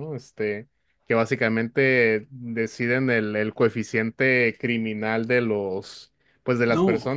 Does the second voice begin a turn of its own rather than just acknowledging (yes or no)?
no